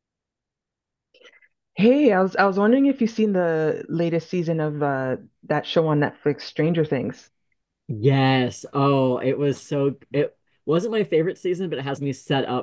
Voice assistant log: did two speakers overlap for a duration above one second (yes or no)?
no